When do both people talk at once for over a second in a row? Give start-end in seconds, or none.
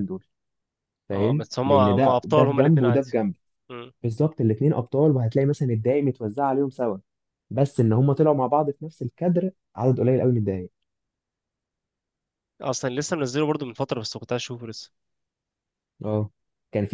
1.1-3.1